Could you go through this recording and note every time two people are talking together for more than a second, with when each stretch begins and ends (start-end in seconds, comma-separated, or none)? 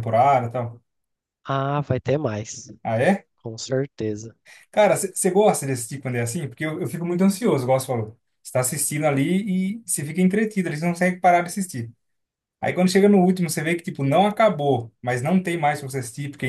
none